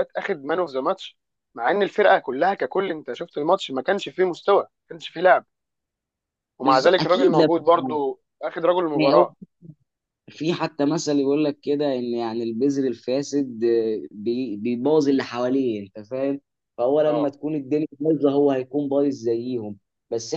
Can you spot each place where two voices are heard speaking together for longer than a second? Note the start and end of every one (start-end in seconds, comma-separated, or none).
6.6-8.0